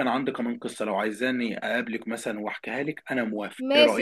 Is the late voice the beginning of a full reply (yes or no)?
yes